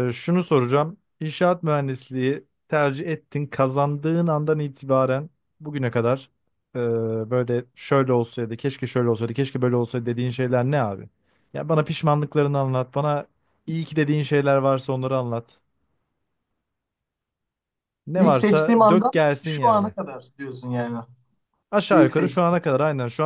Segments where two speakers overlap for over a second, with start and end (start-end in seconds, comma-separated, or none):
18.1-19.9